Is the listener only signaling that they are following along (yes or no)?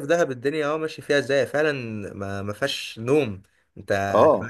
yes